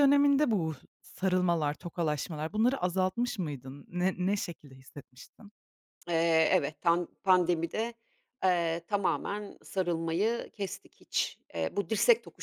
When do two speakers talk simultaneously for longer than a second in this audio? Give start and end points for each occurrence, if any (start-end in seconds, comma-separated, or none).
none